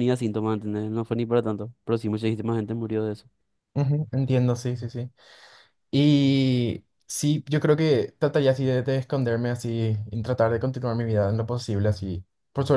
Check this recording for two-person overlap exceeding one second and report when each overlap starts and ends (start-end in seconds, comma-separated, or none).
none